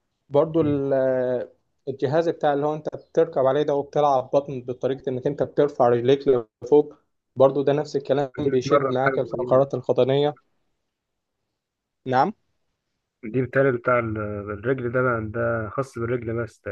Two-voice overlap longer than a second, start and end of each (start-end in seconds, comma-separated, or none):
8.4-9.6